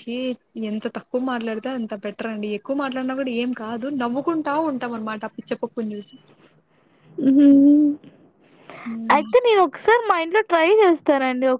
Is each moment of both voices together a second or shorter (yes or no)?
yes